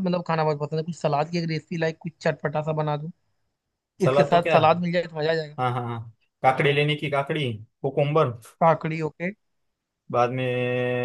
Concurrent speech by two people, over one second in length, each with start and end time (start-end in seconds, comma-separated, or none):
none